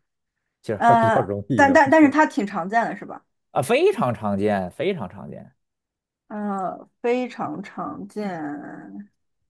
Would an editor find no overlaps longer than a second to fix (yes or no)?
no